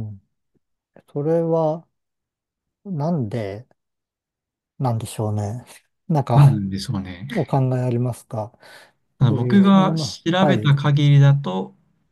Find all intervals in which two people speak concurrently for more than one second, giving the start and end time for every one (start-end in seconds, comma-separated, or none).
9.3-10.8